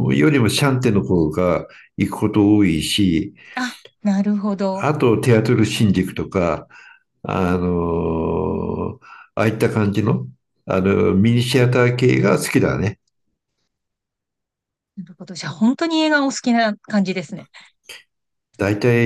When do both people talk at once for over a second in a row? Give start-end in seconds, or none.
none